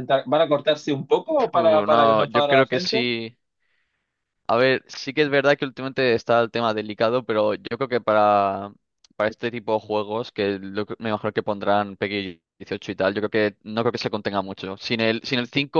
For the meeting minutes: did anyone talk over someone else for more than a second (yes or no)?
yes